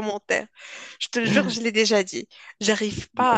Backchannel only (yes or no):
yes